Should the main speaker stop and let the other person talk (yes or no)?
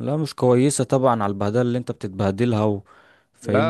yes